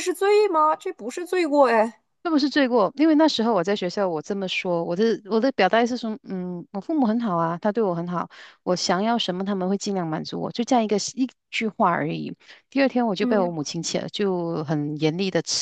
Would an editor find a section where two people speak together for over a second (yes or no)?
no